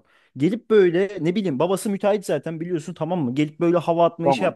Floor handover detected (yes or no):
no